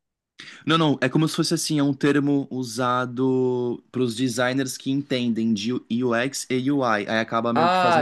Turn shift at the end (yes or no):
yes